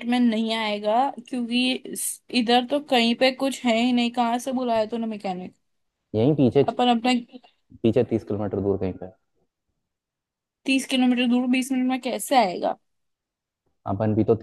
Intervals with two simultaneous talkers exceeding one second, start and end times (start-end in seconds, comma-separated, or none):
none